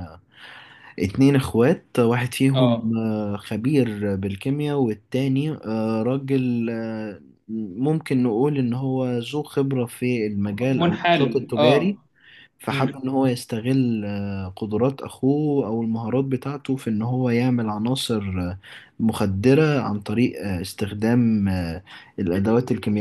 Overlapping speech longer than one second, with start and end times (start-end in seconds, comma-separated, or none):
10.8-12.0